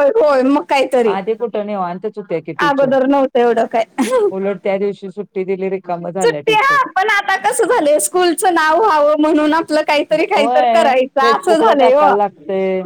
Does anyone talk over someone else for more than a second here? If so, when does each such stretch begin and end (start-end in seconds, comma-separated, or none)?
10.1-12.1